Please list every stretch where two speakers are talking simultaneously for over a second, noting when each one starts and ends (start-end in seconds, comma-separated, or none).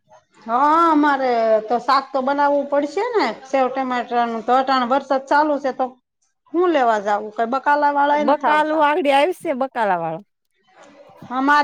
none